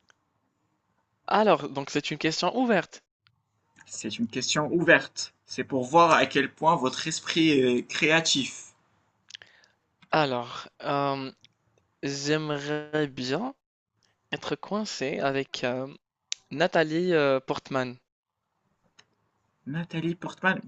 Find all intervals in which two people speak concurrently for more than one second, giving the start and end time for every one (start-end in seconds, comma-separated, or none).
none